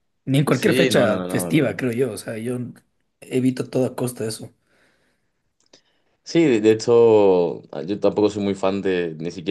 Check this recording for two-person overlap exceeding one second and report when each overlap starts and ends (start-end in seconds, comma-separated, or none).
0.5-1.8